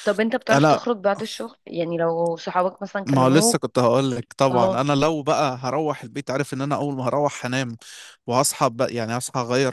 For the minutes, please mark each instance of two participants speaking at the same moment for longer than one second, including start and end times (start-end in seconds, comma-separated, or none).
none